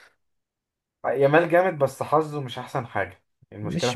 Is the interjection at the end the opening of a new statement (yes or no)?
yes